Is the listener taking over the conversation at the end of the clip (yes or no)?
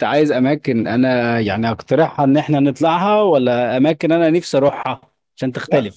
yes